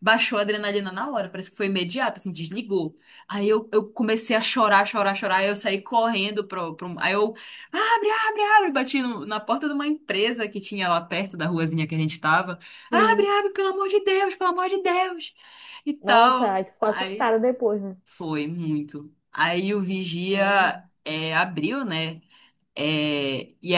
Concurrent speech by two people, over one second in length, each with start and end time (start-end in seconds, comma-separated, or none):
16.0-17.3